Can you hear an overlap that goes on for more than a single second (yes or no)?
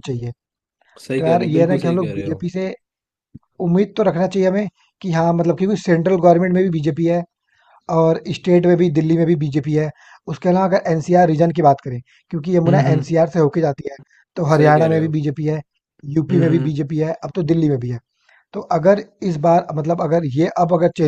yes